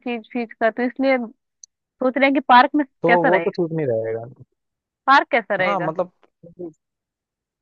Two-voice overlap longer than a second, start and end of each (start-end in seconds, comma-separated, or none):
none